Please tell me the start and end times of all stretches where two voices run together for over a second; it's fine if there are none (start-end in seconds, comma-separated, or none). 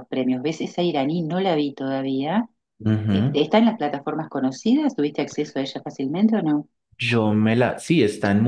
none